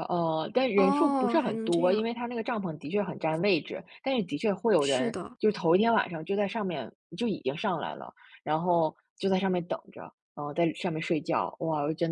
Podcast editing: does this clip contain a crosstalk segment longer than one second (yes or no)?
yes